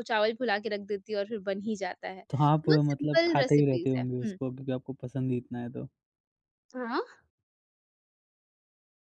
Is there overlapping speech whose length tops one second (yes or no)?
yes